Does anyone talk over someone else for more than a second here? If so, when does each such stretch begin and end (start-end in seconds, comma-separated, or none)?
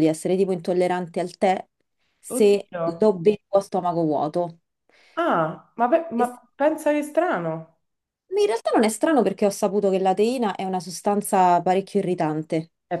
none